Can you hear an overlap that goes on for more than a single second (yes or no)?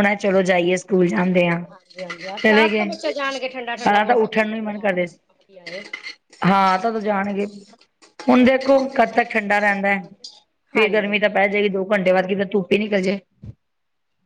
yes